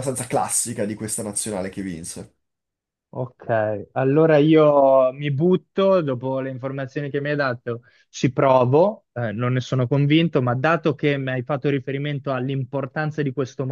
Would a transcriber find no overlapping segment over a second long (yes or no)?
yes